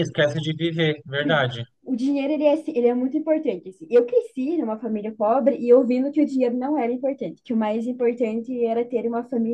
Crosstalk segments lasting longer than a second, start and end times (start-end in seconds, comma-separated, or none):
none